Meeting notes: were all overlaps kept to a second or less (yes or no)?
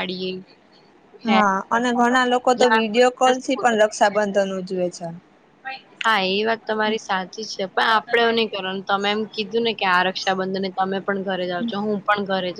no